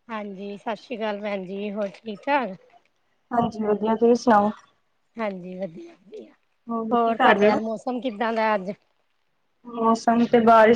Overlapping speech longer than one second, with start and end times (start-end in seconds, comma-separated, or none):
none